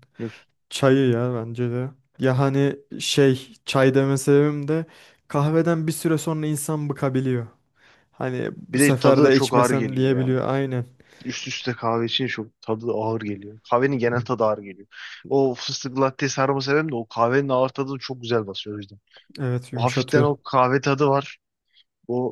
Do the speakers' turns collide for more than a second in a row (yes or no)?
yes